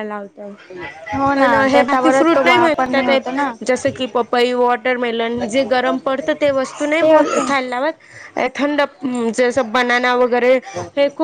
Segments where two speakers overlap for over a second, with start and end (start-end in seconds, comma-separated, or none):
1.3-3.1